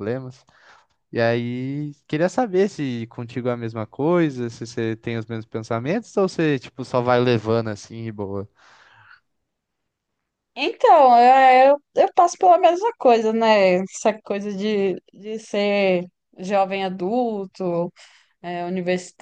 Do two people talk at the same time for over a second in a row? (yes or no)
no